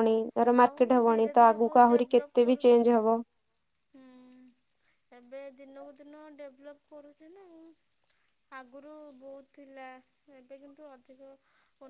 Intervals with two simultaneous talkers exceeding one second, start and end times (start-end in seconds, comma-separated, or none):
0.6-2.8